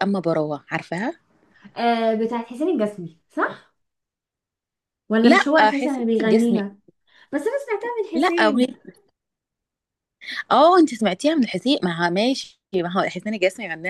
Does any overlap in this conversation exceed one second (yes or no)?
yes